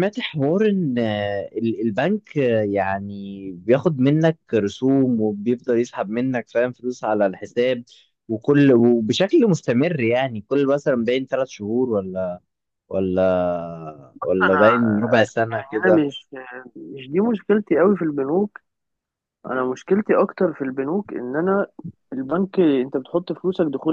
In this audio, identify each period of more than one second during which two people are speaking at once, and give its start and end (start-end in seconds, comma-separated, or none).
none